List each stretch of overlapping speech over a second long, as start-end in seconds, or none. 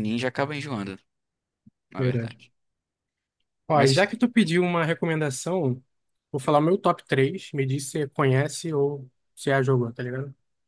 none